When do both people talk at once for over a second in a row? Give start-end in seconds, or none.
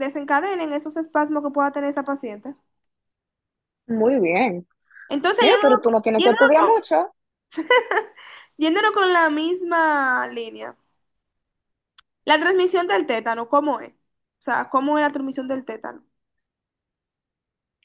5.4-6.8